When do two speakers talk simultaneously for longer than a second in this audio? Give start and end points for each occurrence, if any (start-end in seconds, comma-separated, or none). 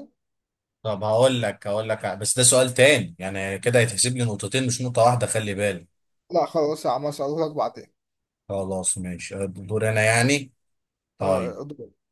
none